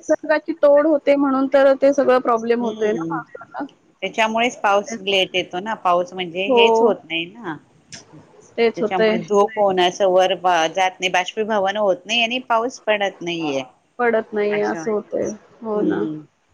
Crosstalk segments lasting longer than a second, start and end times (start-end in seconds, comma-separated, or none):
14.5-16.0